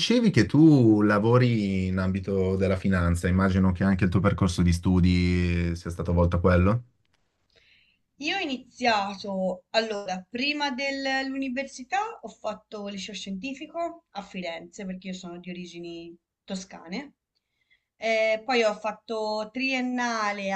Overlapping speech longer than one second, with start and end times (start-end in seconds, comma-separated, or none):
none